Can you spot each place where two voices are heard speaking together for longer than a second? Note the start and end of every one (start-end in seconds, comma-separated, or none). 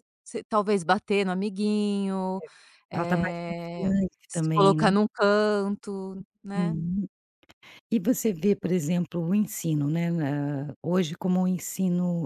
2.9-4.8